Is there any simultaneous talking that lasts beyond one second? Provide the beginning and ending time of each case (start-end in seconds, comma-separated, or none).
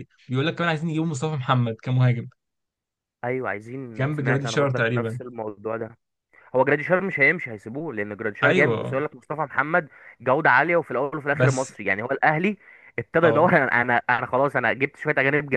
4.0-5.2